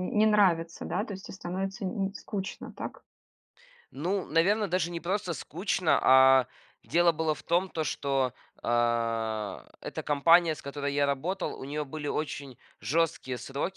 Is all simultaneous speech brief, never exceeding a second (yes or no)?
yes